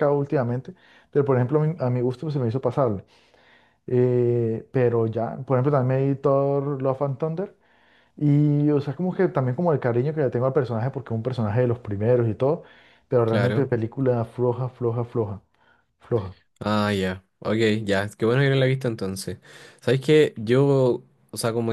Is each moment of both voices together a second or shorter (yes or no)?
yes